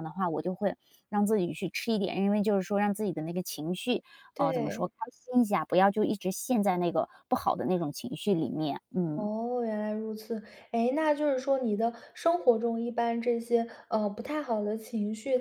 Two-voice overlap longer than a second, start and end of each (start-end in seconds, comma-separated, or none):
none